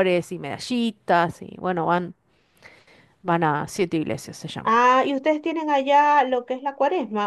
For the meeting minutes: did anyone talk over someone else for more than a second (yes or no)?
no